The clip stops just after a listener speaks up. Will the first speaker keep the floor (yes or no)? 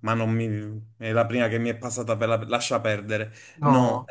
yes